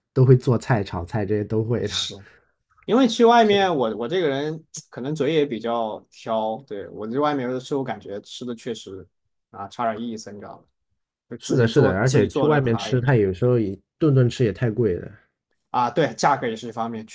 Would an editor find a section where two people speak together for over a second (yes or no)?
yes